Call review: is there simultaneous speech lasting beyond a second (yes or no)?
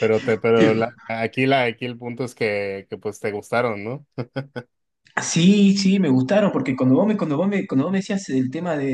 no